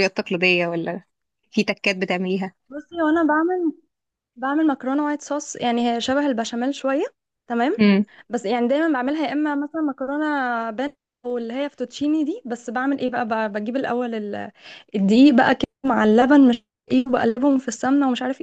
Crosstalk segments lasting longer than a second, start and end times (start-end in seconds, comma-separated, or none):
none